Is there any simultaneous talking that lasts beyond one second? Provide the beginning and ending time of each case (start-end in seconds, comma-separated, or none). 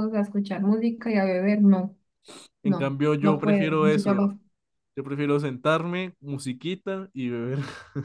2.6-4.3